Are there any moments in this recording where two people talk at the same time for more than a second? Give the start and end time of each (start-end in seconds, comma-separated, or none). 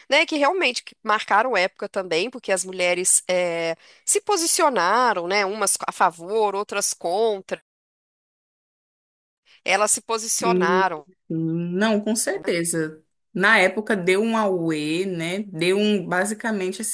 none